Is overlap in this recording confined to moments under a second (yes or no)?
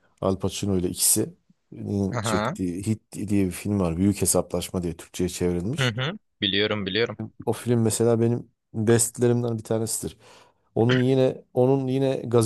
yes